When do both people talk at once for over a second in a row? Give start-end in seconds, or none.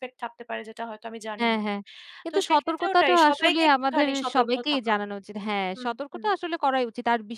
2.3-4.9